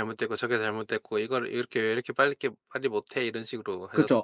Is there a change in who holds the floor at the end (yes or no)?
yes